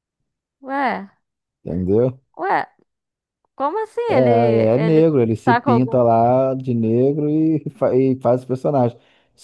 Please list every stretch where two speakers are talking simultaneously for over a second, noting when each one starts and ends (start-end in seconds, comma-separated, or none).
4.1-6.0